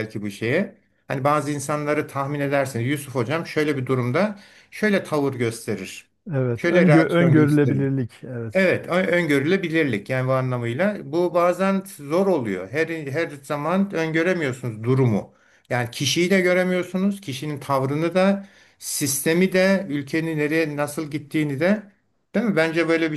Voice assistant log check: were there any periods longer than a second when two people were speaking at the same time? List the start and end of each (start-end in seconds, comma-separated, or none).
6.5-7.8